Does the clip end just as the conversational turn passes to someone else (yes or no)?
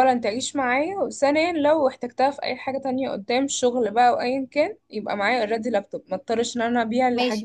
yes